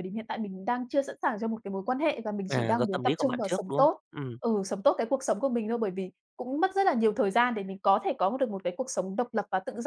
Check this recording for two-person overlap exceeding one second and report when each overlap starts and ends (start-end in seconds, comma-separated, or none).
2.5-3.9